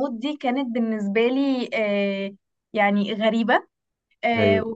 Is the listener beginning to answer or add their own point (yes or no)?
no